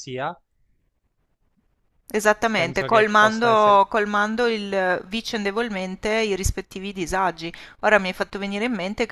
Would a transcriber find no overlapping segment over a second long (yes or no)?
no